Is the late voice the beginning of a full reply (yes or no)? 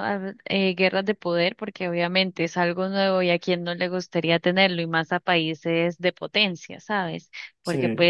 no